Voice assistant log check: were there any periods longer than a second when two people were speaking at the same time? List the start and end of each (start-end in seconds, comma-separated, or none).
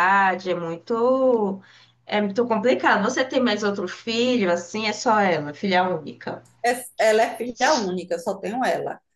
none